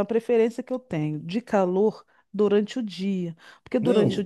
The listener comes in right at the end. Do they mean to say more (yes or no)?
no